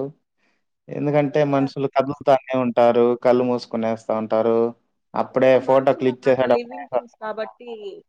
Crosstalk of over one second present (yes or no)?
yes